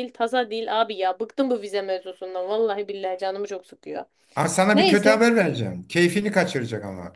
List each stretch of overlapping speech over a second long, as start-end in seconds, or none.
none